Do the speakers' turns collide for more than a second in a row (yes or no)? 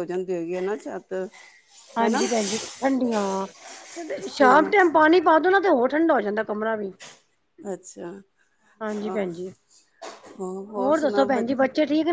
no